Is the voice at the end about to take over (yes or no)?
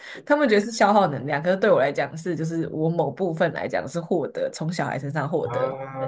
yes